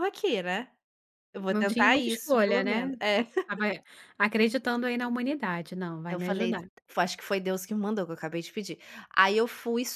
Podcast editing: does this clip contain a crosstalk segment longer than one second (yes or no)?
yes